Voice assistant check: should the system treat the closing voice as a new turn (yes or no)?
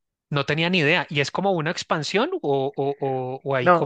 yes